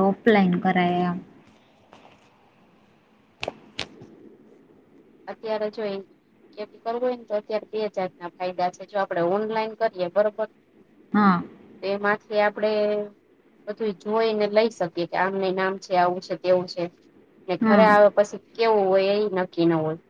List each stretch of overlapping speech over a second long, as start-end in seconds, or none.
none